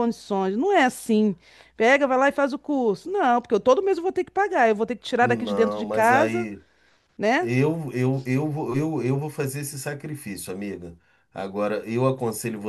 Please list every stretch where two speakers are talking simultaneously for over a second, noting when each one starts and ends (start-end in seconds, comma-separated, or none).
5.2-6.5